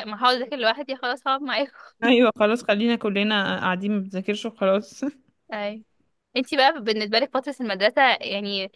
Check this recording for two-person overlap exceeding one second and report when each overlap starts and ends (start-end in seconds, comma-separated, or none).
none